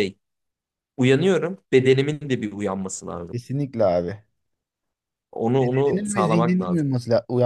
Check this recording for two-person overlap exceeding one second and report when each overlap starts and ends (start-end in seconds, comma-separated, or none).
5.6-6.9